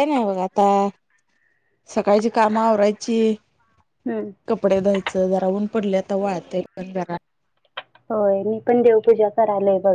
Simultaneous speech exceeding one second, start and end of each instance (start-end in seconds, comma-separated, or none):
none